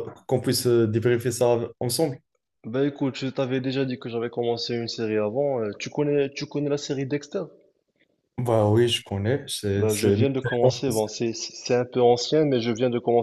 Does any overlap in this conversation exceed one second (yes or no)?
yes